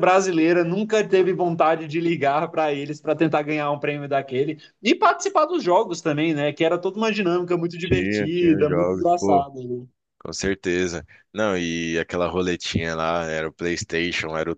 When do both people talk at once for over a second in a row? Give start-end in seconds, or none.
7.8-9.5